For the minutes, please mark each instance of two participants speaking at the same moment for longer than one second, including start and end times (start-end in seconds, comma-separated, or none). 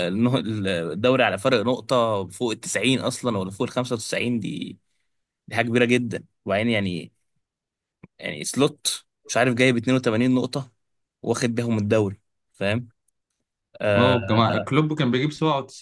none